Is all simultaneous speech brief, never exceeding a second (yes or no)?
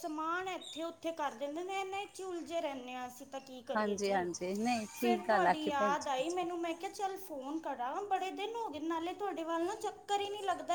no